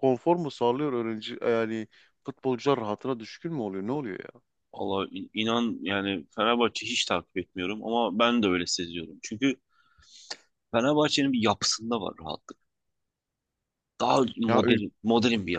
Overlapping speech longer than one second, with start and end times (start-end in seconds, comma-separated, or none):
none